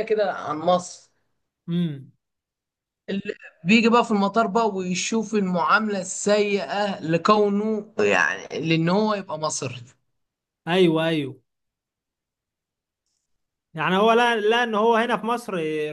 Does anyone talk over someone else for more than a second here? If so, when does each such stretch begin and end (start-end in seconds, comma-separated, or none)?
none